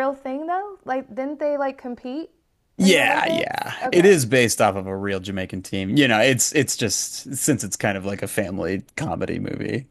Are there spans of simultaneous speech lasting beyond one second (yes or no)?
yes